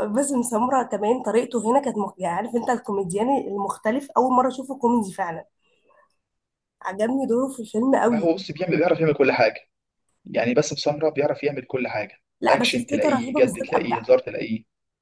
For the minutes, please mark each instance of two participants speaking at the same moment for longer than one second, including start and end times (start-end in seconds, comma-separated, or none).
12.4-14.0